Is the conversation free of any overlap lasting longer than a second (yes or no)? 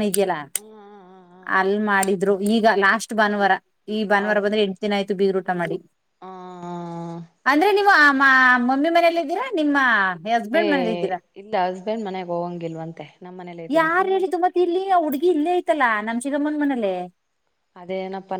yes